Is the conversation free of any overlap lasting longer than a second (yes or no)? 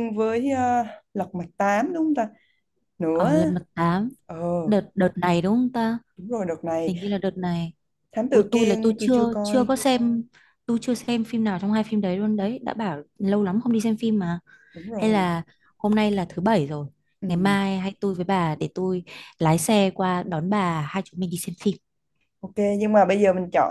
no